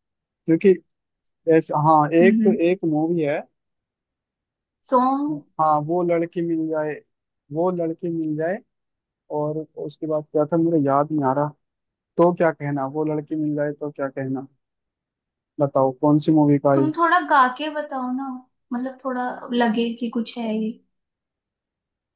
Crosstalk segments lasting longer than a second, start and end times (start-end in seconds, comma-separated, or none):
none